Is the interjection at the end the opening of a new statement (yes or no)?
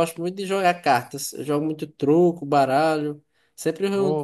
no